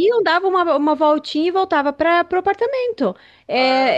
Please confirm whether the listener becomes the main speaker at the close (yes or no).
no